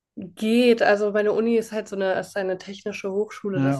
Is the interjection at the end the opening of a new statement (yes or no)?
no